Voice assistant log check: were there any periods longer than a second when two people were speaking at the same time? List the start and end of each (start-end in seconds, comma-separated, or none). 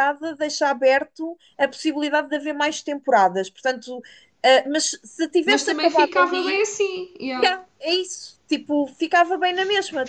5.4-6.7